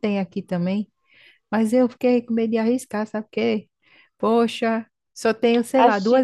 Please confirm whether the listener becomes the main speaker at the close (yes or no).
no